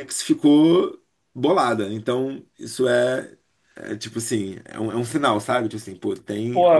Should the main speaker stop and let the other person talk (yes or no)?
yes